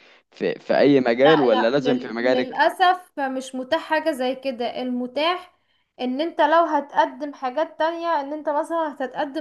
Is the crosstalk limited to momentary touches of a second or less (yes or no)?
no